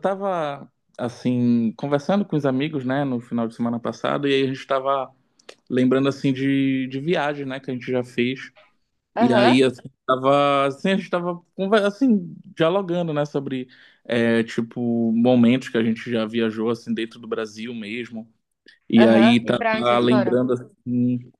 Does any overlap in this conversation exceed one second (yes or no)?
yes